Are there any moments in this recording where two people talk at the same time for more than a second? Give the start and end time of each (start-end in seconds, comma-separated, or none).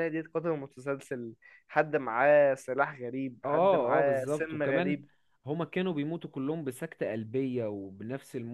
3.5-5.0